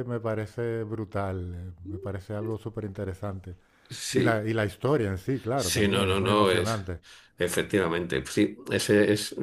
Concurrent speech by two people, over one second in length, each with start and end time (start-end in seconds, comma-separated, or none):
5.5-6.8